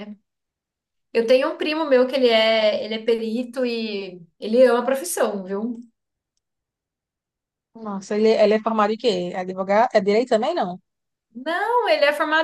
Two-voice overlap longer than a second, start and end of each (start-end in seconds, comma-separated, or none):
none